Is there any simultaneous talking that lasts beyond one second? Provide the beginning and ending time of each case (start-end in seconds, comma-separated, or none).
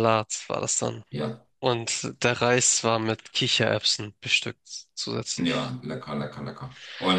none